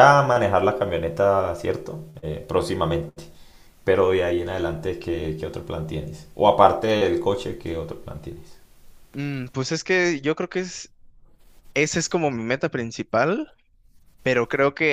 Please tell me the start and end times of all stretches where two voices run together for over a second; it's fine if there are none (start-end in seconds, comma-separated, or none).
none